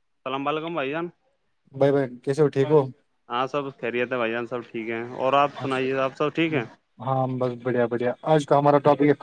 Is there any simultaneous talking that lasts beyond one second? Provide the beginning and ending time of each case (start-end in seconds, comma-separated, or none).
none